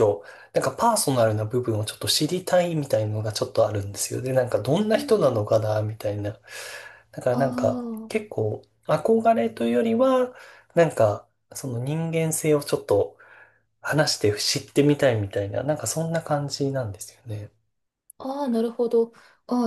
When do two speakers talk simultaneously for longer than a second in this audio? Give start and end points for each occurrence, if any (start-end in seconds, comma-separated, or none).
none